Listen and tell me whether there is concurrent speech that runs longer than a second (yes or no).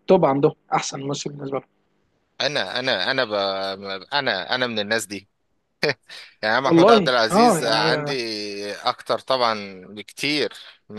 yes